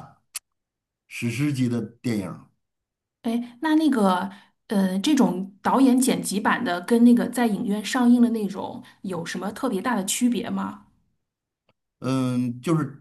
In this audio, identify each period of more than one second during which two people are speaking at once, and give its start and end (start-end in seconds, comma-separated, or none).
none